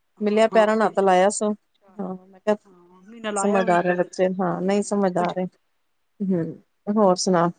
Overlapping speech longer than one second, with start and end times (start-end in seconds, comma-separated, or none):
3.4-5.5